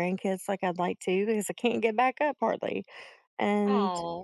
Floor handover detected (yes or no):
no